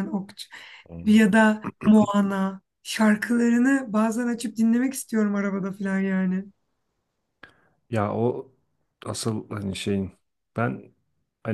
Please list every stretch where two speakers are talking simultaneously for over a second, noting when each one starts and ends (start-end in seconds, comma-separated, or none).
none